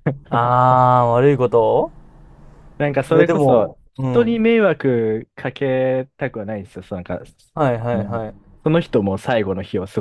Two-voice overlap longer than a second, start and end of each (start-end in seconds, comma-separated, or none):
3.1-4.4